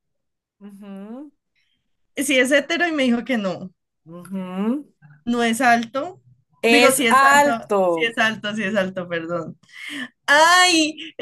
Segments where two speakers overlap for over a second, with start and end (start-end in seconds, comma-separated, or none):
6.7-8.2